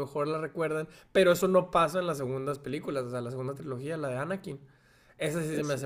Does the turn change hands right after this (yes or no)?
no